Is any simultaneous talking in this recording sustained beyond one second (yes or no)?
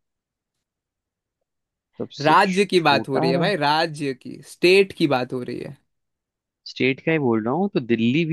yes